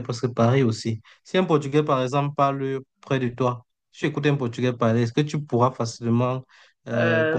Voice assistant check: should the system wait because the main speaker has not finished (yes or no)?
no